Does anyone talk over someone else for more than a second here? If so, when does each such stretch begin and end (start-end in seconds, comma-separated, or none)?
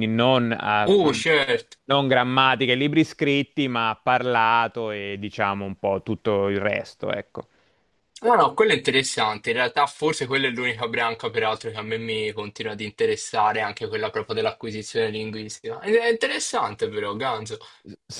none